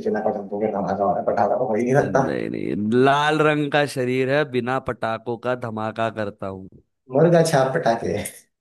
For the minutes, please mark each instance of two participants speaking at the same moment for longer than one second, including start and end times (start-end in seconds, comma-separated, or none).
none